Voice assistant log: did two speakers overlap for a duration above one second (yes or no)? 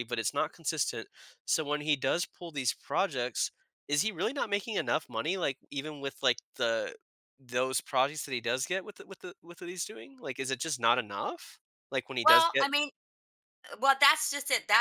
no